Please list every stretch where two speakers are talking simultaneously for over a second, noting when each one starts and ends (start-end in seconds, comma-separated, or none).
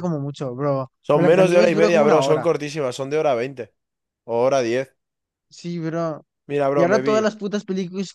1.0-2.5